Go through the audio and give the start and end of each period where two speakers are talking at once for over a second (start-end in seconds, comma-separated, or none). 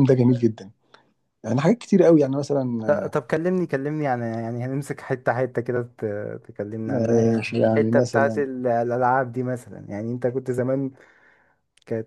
6.9-8.4